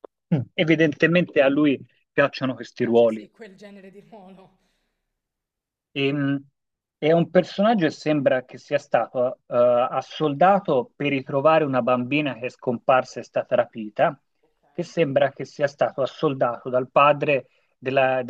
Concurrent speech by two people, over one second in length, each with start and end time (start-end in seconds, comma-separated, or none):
none